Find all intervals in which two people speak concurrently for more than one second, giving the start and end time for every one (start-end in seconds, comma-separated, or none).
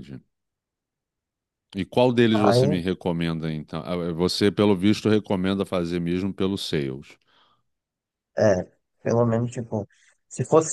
none